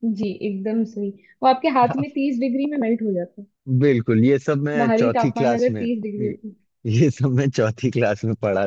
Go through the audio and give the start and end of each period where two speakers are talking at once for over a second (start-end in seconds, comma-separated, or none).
4.8-6.4